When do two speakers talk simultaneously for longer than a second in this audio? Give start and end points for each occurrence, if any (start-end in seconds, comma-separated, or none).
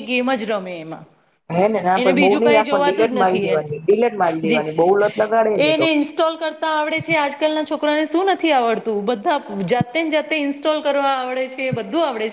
2.0-3.7